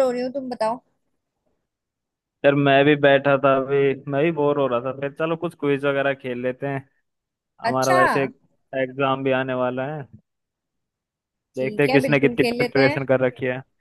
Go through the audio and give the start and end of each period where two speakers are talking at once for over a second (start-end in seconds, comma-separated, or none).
11.6-13.0